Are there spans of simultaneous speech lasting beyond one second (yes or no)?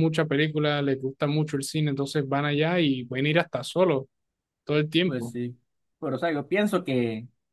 no